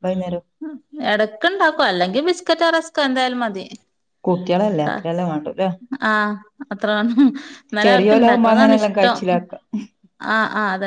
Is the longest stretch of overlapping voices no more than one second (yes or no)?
no